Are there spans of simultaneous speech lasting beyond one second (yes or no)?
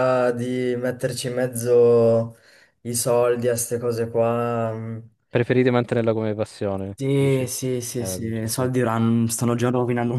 yes